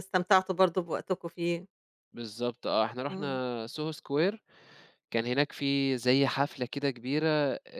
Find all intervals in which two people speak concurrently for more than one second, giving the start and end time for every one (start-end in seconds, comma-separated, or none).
none